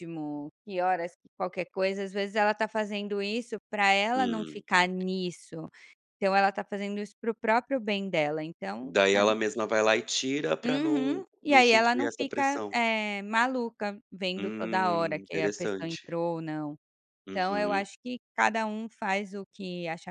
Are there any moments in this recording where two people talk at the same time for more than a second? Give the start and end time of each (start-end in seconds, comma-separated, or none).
10.6-12.7, 14.4-16.1